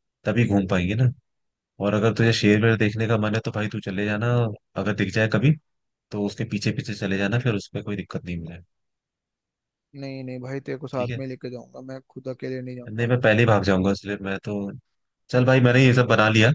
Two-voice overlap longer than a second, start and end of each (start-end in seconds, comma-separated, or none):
none